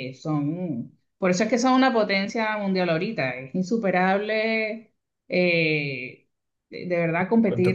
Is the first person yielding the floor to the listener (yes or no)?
no